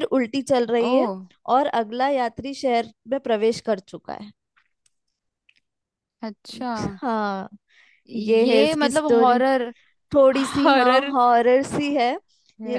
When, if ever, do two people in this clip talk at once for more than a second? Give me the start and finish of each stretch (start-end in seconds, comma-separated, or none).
8.1-9.4